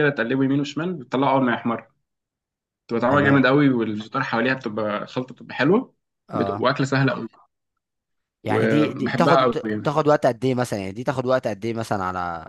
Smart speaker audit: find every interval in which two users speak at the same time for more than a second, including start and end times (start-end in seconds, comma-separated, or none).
8.4-9.9